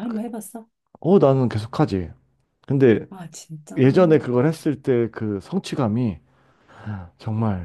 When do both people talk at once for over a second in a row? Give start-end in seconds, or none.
none